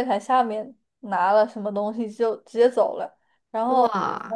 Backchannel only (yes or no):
yes